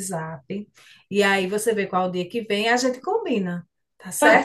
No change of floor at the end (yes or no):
no